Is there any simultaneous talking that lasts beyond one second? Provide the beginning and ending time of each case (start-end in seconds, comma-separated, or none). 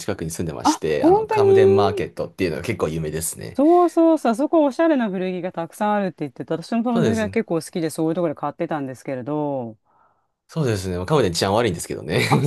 0.6-2.0